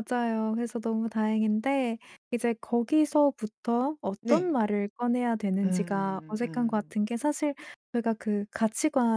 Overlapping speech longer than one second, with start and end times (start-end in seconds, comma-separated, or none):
5.6-7.0